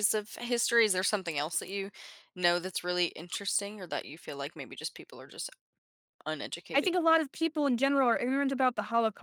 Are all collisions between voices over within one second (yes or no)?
yes